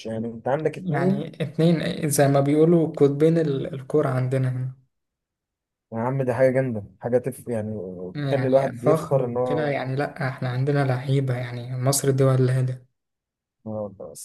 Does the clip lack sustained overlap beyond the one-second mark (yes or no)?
no